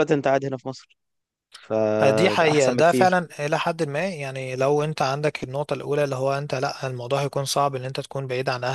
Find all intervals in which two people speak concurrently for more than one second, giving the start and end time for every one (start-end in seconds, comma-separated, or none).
2.0-3.2